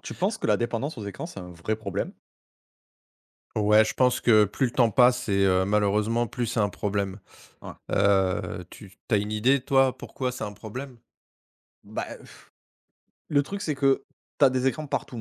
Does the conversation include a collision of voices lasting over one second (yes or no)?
no